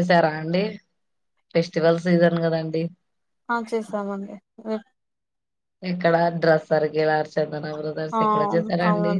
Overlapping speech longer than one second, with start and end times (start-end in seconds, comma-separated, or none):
none